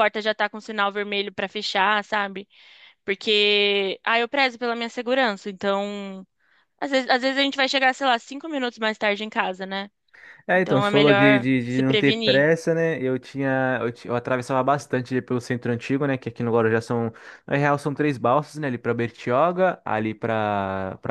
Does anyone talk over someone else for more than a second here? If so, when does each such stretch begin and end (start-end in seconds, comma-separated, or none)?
10.5-12.5